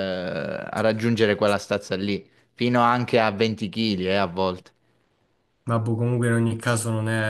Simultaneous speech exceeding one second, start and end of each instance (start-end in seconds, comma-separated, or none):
none